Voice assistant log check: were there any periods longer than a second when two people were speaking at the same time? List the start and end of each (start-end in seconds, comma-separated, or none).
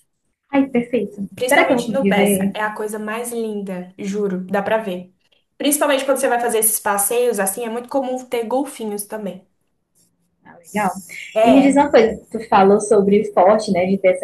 1.3-2.5